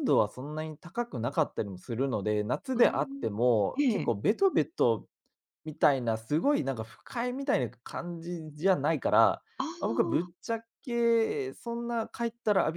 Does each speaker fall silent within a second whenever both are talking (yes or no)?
no